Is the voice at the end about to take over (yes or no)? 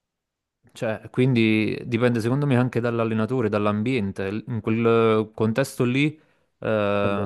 no